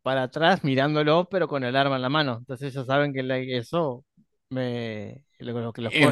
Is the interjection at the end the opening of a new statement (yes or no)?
yes